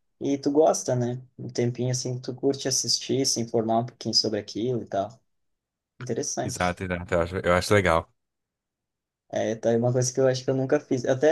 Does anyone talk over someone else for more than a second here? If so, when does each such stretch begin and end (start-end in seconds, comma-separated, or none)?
none